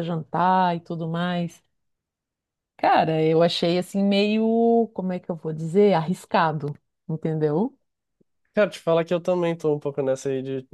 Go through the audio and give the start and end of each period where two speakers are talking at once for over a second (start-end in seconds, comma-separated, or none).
none